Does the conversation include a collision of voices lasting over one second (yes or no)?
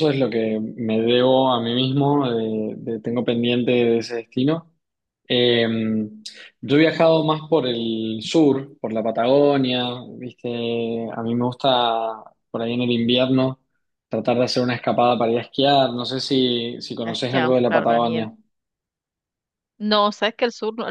yes